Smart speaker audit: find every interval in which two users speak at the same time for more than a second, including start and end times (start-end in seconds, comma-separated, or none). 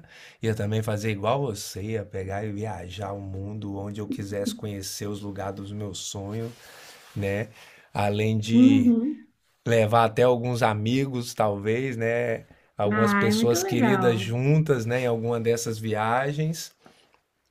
12.9-14.3